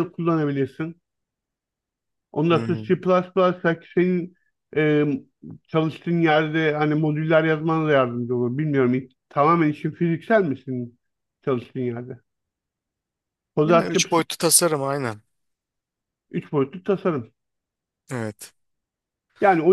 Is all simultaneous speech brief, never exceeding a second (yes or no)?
yes